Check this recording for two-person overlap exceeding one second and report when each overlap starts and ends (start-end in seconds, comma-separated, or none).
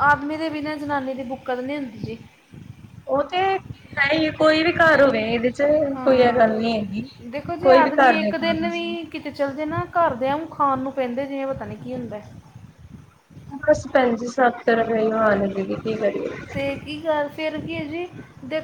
7.6-8.9